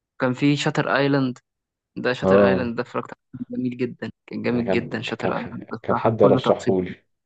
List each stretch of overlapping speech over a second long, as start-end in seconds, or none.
4.5-6.7